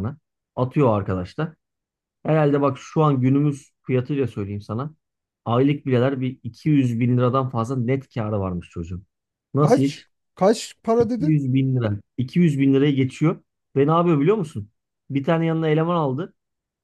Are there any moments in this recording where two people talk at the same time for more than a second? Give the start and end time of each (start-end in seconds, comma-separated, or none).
none